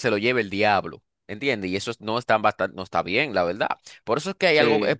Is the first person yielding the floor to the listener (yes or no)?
no